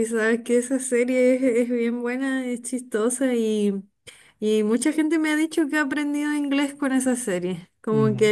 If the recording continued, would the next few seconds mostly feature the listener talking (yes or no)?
no